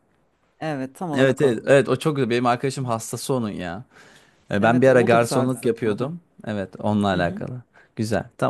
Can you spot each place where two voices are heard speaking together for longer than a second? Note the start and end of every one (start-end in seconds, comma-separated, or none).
4.6-6.1